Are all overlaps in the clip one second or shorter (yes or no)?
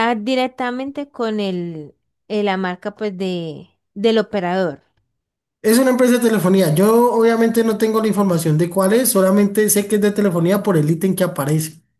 yes